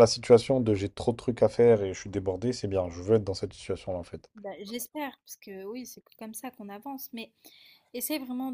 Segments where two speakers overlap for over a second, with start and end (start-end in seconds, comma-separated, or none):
none